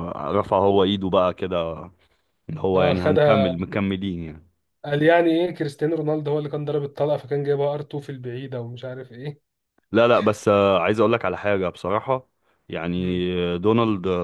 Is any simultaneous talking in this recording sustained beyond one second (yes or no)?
no